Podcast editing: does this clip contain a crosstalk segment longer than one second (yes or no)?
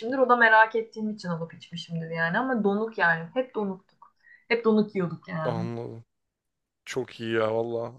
no